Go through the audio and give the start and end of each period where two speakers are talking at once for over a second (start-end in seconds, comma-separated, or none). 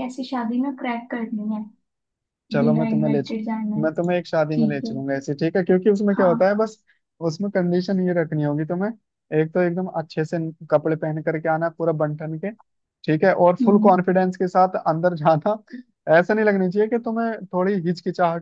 2.6-3.9